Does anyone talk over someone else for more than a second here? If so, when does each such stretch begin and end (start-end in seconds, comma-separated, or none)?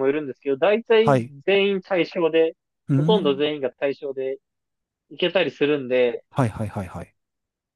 none